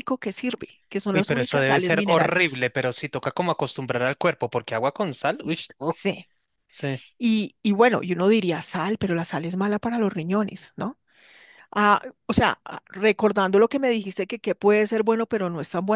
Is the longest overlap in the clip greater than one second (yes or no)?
yes